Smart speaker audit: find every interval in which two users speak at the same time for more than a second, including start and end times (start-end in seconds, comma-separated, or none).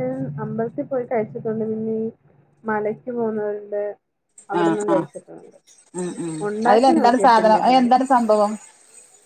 6.5-7.9